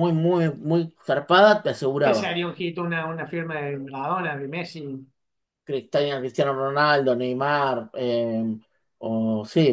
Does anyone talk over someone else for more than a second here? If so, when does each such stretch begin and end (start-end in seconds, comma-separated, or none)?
none